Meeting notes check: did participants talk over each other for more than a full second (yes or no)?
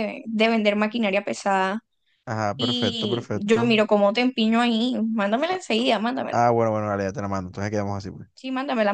yes